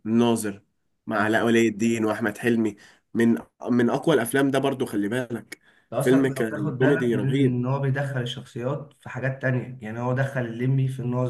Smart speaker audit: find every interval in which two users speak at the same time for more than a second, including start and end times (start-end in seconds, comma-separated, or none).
6.0-7.6